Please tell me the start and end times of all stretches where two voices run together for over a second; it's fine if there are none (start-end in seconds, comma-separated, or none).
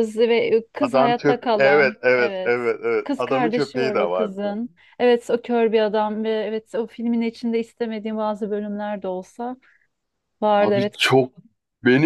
0.8-4.3